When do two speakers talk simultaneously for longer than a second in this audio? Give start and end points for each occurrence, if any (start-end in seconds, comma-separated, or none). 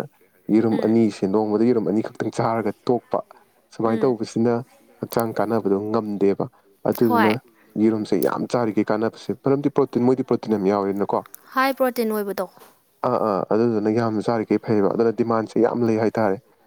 none